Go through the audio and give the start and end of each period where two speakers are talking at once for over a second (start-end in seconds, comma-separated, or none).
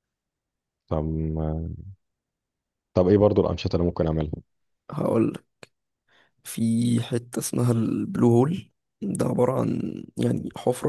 none